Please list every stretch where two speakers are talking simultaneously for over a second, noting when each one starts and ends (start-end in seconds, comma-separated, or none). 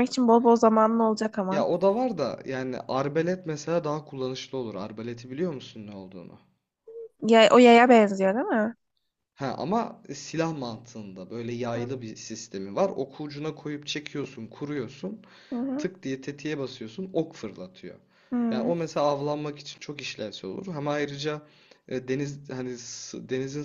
none